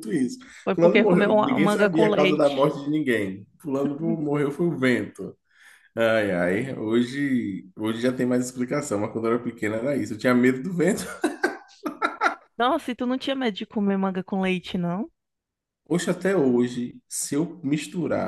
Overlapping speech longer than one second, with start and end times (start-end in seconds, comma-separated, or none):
0.6-2.7